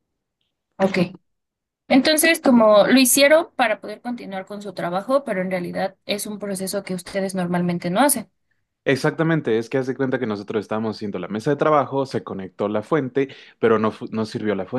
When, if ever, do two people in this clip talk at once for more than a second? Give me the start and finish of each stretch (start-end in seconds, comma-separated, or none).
none